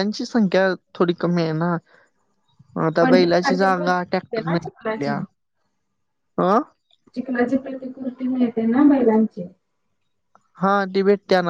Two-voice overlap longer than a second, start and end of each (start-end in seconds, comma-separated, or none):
3.0-5.2